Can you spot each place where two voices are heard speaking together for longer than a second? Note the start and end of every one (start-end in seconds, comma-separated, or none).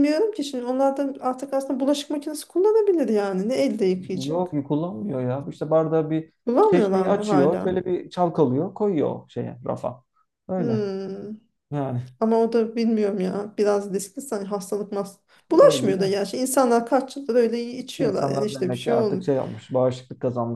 6.5-7.8, 18.0-19.3